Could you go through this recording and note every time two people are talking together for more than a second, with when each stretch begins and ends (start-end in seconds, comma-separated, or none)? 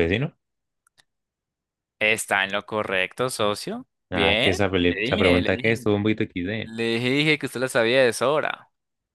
4.1-5.8